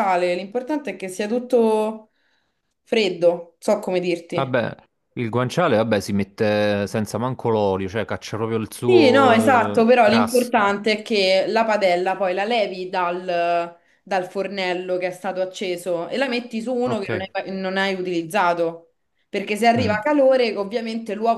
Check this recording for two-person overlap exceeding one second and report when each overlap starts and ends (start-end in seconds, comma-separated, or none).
8.8-10.7